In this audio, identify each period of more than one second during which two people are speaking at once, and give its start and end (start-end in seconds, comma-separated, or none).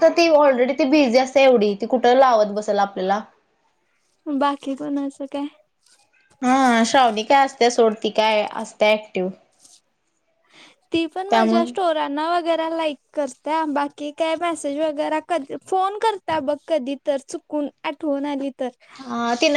none